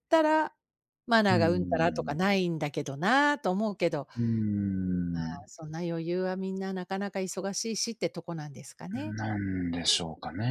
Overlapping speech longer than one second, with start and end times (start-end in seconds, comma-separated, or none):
none